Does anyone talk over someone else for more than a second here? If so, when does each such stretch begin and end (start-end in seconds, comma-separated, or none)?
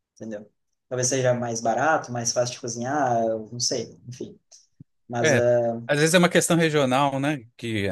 none